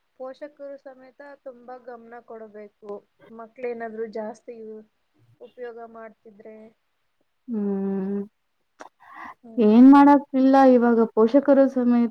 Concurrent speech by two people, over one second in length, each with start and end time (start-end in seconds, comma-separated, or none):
none